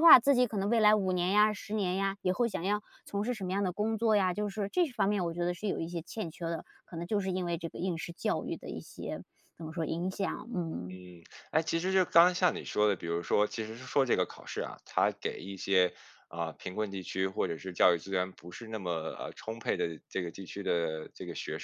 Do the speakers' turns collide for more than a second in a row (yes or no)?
no